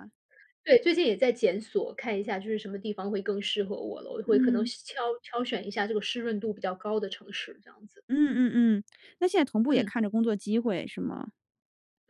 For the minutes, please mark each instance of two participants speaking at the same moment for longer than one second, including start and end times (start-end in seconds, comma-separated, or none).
none